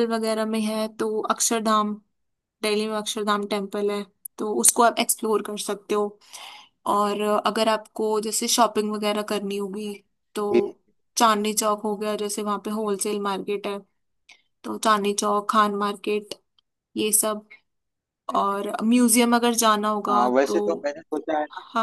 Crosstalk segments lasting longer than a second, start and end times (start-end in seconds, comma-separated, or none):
none